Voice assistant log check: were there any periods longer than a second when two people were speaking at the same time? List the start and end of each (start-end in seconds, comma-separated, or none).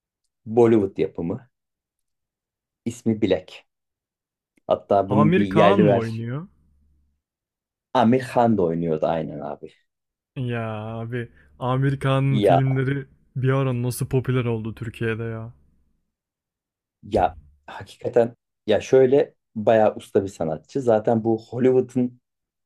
5.1-6.3